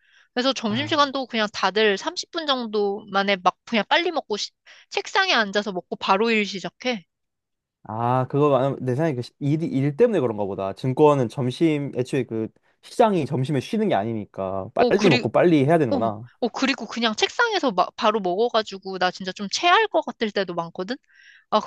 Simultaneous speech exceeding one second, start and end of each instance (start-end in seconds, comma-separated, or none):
none